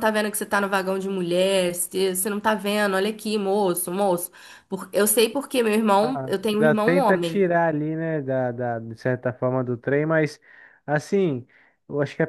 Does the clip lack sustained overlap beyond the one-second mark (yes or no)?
no